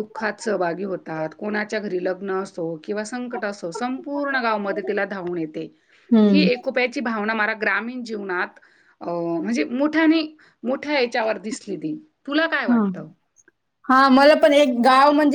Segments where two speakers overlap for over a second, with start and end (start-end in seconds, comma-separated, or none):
none